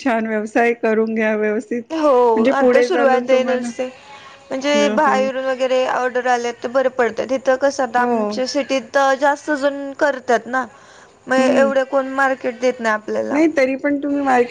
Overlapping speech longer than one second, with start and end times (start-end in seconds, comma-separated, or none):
2.4-3.7